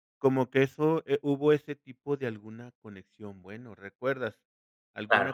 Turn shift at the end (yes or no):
no